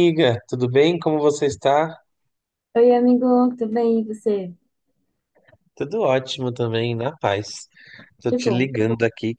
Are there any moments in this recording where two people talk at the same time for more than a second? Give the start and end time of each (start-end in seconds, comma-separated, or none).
none